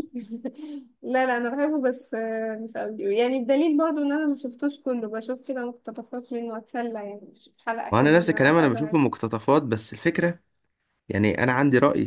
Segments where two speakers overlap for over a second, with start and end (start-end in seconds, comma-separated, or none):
7.9-9.2